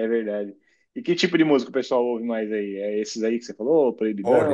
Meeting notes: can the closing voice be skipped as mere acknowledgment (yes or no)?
no